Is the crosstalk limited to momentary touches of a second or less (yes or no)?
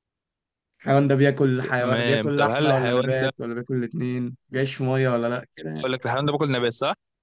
no